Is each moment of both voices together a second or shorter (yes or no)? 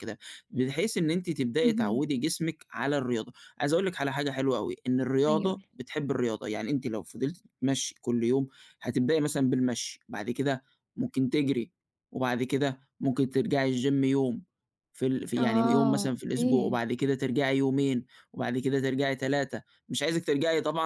no